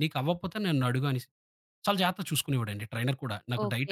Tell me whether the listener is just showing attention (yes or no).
no